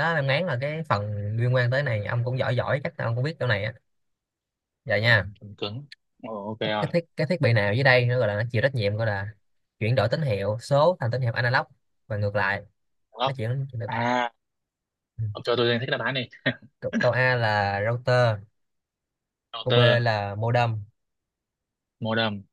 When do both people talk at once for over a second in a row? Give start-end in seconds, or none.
none